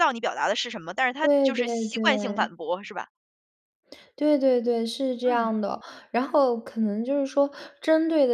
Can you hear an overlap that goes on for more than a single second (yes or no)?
yes